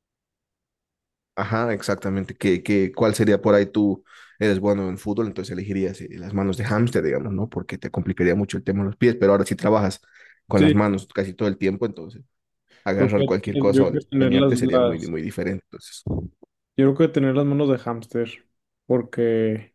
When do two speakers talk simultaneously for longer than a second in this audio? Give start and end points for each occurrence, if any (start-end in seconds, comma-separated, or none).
12.9-15.1